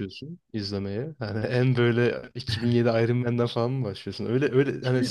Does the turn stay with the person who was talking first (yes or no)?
yes